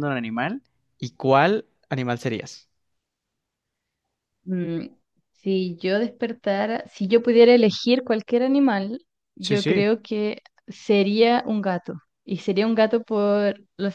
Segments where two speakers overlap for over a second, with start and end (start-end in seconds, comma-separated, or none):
none